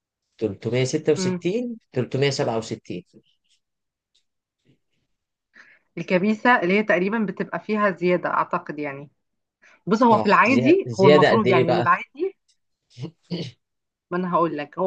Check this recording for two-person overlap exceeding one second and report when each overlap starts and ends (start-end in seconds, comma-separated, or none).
10.0-11.8